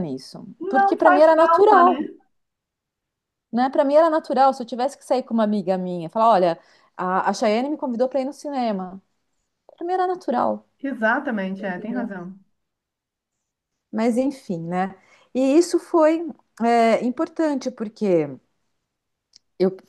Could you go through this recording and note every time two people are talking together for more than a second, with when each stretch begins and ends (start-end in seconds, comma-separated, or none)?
0.6-2.0